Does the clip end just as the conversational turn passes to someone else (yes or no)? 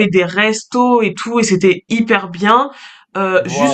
no